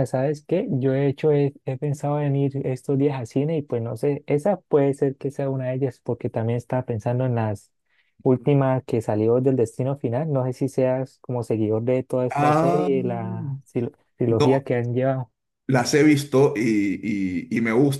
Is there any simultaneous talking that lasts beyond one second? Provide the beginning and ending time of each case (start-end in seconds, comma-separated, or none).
12.3-13.6